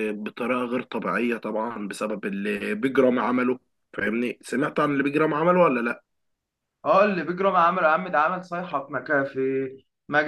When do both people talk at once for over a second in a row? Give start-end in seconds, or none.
none